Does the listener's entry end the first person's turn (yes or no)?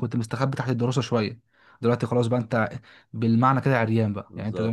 no